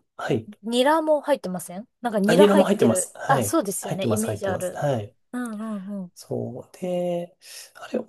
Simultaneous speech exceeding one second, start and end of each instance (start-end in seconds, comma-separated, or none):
2.2-4.8